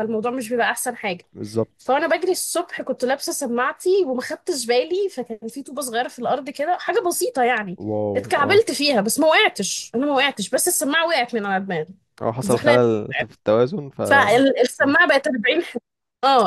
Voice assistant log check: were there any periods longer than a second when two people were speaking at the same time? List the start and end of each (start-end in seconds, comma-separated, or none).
none